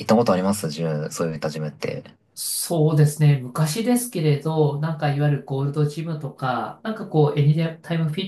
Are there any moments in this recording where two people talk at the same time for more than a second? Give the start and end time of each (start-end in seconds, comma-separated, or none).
none